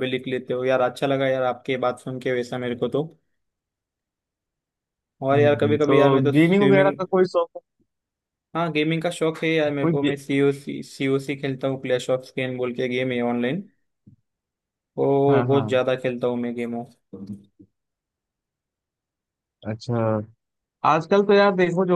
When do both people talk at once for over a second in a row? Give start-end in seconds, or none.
5.3-7.0